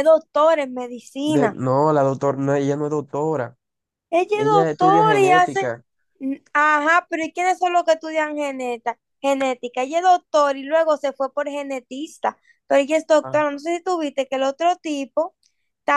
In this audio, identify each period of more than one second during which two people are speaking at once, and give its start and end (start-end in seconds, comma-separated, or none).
4.3-5.7